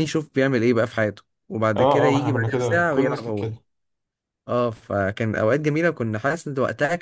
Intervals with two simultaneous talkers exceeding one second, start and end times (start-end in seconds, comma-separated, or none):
1.8-3.5